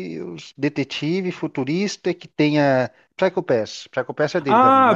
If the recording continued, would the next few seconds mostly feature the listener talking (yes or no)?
yes